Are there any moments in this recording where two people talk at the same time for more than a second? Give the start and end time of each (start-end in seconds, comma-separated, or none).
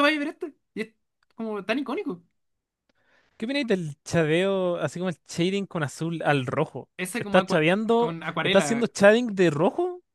7.0-8.8